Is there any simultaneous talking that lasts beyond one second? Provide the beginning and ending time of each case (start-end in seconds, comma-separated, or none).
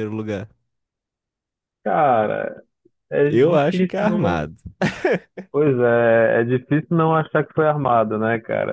3.2-4.5